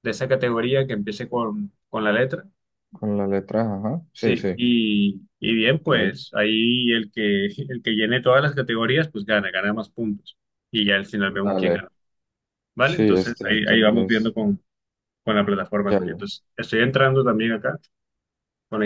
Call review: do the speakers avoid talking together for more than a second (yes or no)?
no